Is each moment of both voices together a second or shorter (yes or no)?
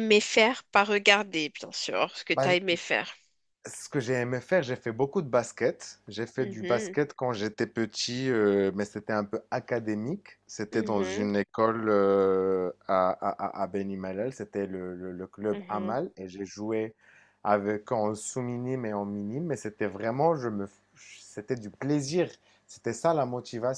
yes